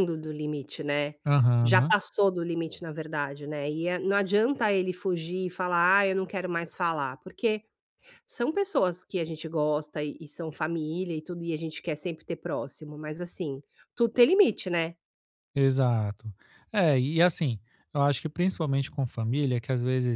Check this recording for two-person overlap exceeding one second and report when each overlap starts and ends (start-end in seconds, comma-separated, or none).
none